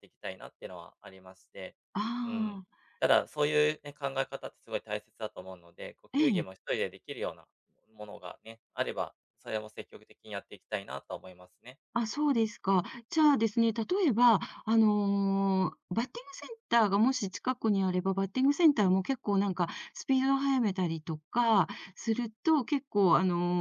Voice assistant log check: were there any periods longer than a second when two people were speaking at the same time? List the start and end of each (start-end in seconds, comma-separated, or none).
none